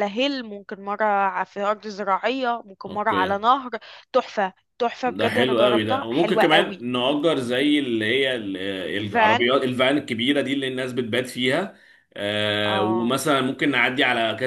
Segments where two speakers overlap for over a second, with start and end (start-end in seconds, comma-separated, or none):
5.1-6.8